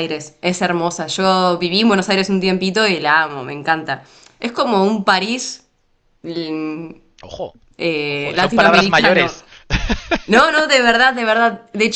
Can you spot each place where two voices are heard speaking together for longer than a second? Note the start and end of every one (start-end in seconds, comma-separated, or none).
8.1-9.3